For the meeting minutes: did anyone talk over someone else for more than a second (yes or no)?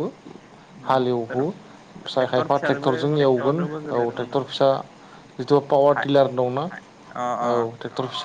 yes